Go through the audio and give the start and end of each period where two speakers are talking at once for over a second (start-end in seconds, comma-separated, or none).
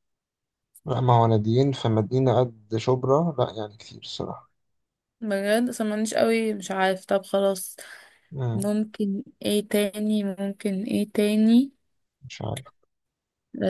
none